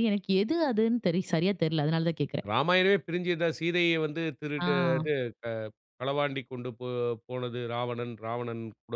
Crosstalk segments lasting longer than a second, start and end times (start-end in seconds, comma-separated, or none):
none